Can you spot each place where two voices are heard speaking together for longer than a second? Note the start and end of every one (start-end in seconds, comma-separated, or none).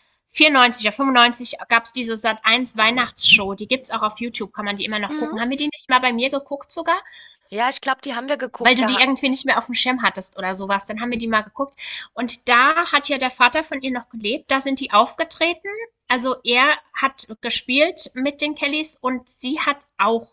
none